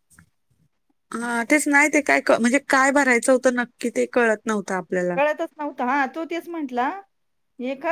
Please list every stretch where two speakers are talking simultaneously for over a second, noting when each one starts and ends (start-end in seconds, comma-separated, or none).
none